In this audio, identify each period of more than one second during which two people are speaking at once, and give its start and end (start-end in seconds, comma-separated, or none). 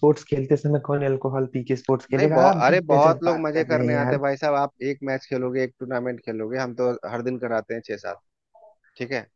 2.2-4.2